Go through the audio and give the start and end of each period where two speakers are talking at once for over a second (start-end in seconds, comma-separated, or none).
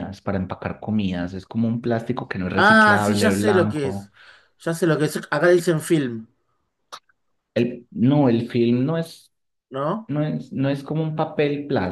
2.5-4.1